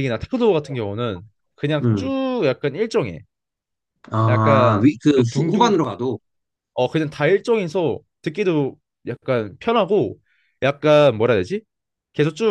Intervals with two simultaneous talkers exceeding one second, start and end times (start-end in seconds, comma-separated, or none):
4.3-5.8